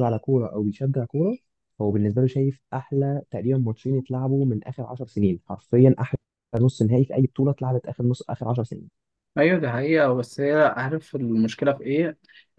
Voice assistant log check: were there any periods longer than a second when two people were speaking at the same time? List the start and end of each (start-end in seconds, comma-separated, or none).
none